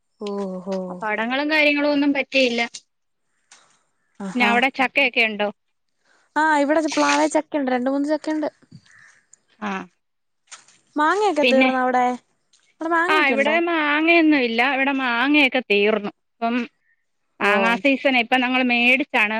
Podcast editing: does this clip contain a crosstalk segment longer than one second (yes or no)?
no